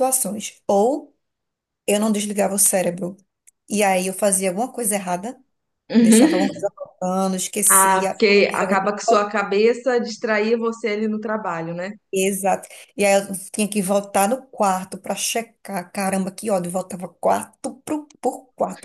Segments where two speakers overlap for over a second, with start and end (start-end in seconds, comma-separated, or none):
7.7-9.3